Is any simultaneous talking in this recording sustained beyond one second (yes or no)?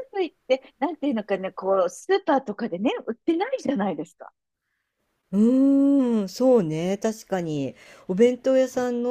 no